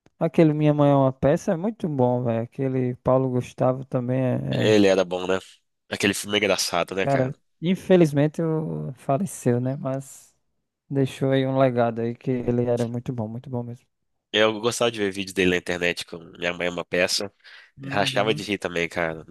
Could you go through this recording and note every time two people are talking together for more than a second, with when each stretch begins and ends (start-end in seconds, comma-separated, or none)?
none